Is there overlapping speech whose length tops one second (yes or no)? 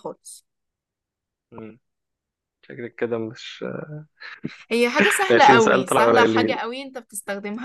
yes